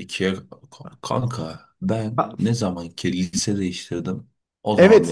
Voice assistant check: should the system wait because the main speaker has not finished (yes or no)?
no